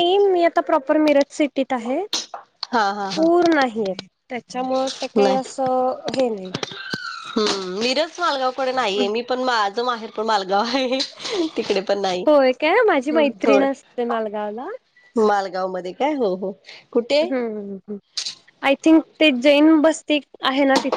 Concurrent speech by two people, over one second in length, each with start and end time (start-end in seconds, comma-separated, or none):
none